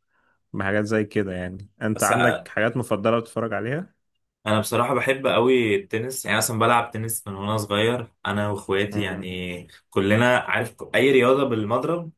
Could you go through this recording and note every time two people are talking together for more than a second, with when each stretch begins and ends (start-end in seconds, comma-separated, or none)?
none